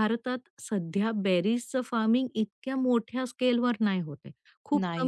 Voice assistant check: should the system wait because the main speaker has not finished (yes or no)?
yes